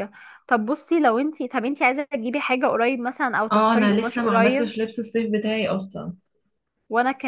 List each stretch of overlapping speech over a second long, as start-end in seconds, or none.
3.5-4.7